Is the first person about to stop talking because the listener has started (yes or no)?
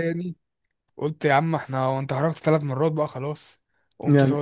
yes